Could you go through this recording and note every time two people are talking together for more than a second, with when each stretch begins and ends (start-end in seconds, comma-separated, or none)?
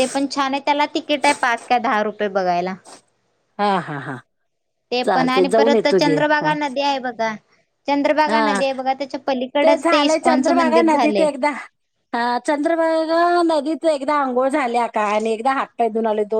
5.0-6.5, 9.8-11.3